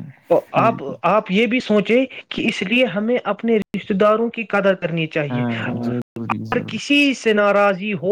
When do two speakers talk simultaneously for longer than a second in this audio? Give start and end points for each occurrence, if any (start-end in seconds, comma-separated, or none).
5.3-6.8